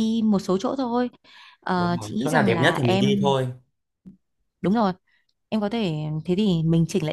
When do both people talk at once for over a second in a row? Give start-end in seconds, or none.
1.8-3.4